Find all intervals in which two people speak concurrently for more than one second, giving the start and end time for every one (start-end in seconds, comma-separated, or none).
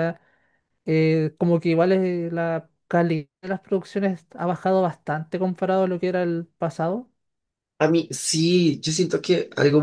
none